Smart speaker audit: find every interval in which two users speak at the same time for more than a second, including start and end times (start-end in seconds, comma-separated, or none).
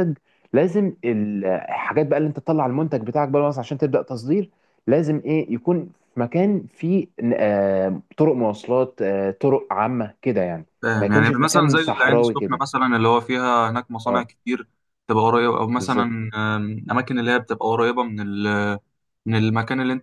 10.8-12.6